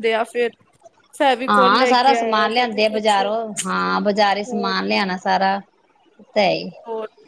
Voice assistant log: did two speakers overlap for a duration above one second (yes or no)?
yes